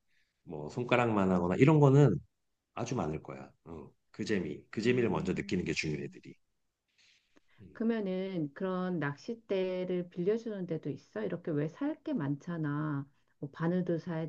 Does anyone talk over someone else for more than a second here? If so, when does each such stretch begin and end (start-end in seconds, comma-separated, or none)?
4.8-6.2